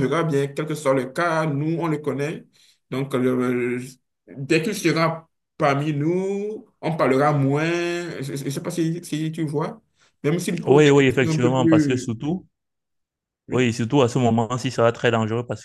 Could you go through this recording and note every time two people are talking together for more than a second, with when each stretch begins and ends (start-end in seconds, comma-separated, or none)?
10.7-12.1